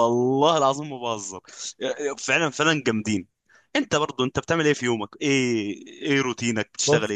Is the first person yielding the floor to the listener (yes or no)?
yes